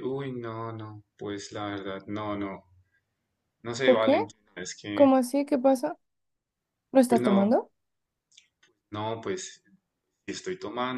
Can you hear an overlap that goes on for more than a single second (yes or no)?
no